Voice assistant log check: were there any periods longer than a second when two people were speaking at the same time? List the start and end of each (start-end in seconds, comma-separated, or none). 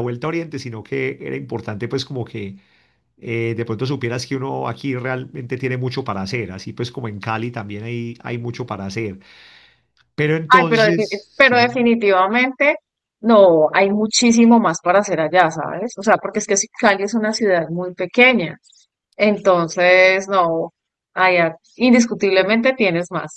10.5-11.9